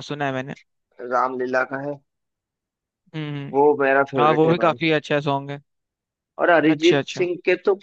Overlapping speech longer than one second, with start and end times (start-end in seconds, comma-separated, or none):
none